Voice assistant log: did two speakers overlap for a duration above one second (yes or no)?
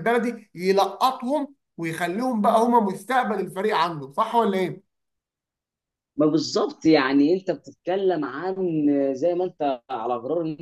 no